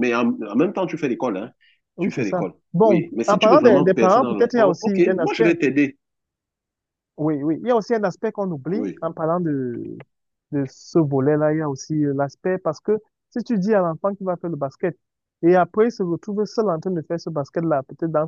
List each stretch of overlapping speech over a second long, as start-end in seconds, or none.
2.0-5.5